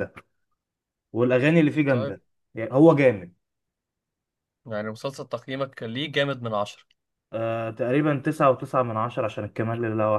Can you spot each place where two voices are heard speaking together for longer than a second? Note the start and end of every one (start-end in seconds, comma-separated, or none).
none